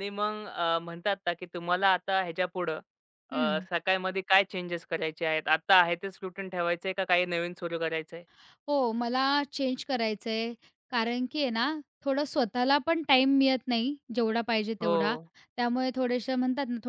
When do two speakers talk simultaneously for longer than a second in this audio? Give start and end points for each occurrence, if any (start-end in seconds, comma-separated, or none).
none